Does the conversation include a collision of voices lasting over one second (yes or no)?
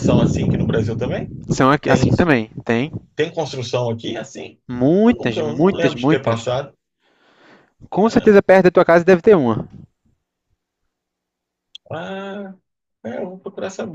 yes